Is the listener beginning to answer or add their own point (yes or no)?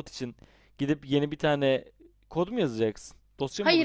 yes